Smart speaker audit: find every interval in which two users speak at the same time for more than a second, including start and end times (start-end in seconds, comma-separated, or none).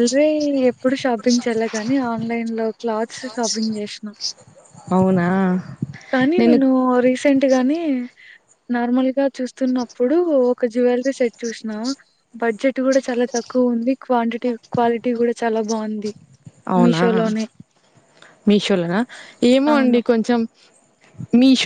none